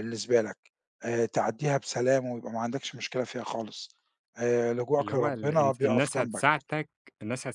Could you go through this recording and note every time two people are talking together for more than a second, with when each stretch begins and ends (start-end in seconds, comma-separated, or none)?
5.0-6.5